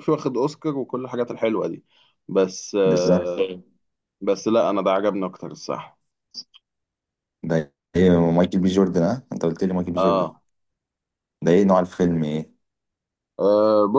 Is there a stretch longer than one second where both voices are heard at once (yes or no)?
no